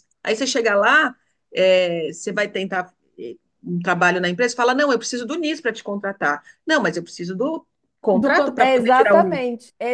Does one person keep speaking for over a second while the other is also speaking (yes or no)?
yes